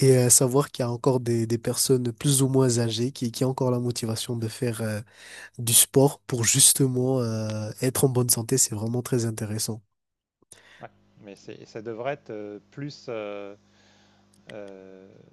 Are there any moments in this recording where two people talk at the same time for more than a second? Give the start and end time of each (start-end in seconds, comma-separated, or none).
none